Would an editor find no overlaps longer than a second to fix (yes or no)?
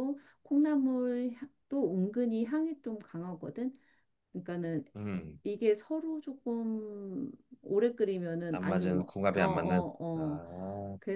no